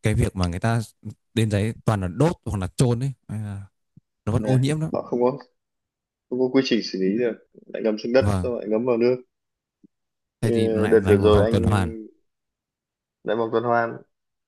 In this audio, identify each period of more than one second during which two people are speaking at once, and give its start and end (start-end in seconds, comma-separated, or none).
10.4-11.6